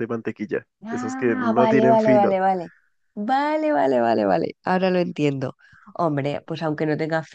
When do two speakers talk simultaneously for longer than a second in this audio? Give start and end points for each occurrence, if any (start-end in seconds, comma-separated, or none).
0.8-2.4